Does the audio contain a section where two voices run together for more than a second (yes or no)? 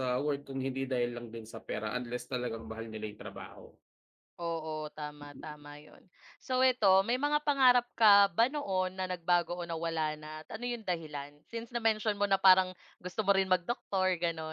no